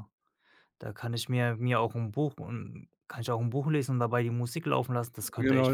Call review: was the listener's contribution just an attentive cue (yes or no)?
no